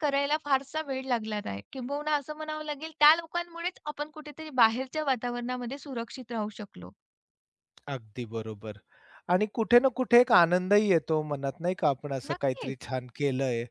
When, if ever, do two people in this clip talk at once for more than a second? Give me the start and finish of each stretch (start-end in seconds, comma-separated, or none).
none